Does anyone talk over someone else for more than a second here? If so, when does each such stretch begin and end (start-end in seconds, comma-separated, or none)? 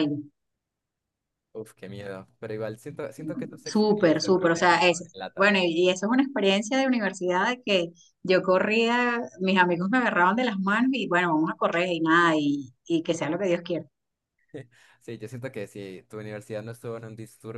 3.6-5.5